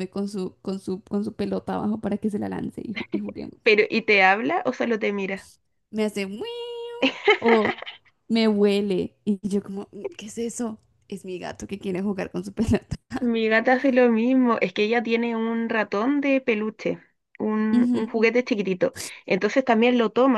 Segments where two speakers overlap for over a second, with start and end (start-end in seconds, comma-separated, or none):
none